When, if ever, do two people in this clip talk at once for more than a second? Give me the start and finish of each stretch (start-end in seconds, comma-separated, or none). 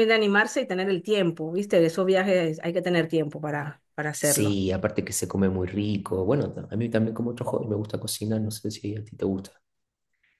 none